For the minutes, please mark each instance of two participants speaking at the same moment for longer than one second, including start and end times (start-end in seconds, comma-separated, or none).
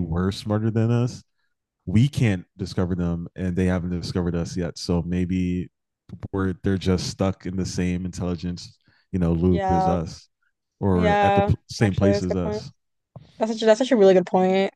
10.9-12.6